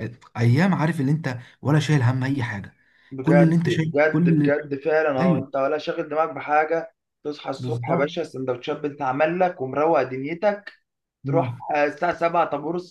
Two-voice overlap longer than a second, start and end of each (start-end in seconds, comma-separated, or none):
3.2-4.5